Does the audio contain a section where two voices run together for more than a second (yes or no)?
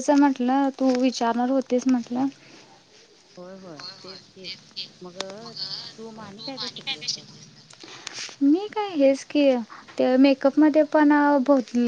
no